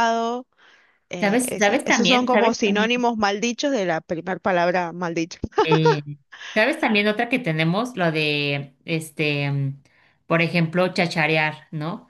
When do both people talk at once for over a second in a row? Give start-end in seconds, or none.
1.2-2.9